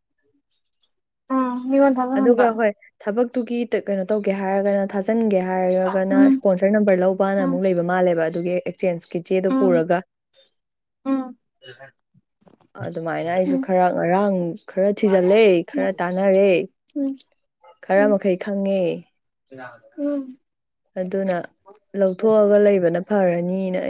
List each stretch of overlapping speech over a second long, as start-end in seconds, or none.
none